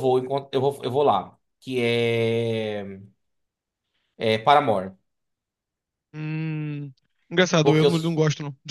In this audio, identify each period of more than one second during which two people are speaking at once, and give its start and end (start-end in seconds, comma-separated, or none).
none